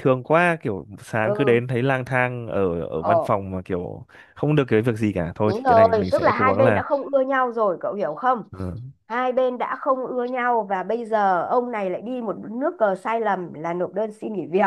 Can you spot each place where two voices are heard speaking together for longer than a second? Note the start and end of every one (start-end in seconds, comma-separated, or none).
5.4-6.8